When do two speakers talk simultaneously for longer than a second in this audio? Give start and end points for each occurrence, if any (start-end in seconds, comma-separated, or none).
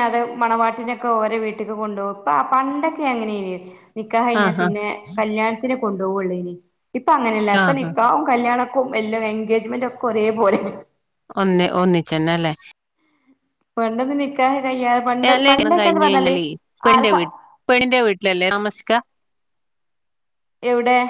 none